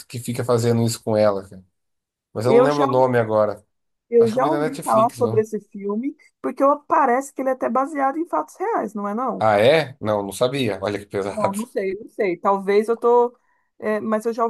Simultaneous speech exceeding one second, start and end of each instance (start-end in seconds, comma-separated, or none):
4.2-5.4